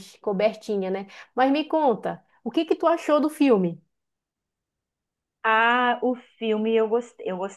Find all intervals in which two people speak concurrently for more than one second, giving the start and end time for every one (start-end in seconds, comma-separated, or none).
none